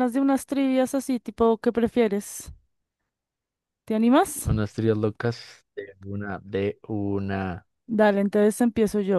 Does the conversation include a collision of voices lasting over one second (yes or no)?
no